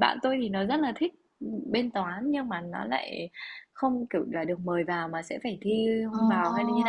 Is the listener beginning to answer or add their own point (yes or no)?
no